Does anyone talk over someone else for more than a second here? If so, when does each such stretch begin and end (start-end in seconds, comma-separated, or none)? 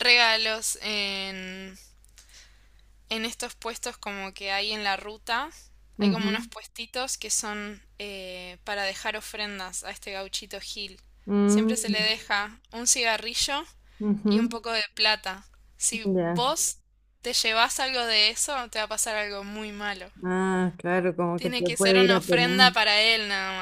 21.4-22.8